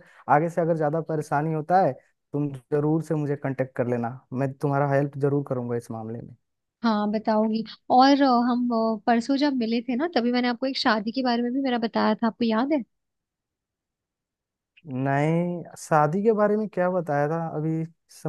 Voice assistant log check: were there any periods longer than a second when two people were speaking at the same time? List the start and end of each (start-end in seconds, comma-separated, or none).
none